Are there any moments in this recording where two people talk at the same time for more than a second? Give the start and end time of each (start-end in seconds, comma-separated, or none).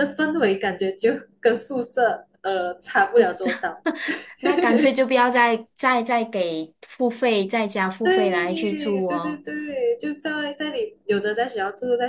8.0-9.4